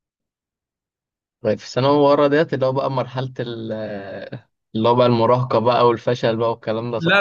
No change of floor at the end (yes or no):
no